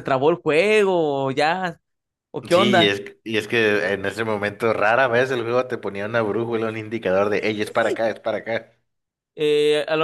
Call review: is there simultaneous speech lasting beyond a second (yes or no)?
no